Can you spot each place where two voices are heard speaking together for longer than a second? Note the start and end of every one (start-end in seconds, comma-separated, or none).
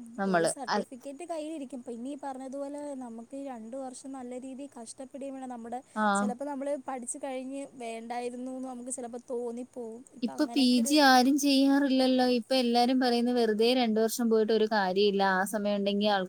none